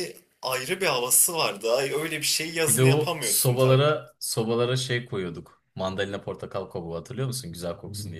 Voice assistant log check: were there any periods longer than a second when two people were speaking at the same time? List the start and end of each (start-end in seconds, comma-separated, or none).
2.6-4.0